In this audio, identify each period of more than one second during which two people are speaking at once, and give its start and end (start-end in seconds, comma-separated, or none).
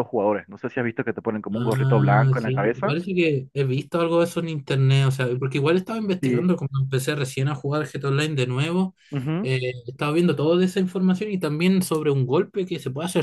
1.6-3.0